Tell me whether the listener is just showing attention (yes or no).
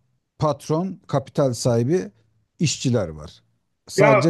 no